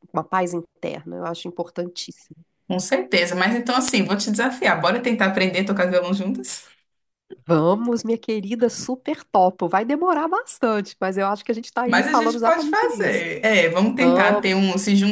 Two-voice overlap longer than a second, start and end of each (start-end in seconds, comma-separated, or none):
11.9-13.2